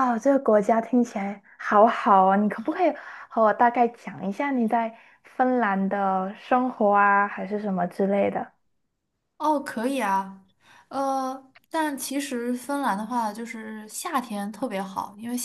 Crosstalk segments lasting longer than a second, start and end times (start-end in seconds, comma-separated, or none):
none